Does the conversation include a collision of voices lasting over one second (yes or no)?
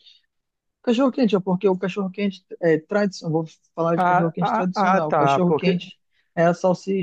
yes